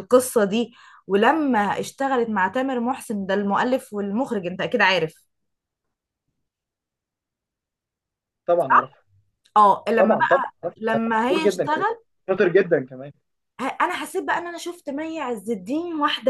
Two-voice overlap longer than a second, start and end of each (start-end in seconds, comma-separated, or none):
10.0-11.8